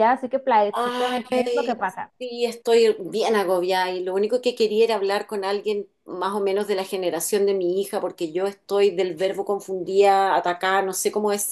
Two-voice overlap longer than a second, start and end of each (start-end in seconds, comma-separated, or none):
0.8-2.1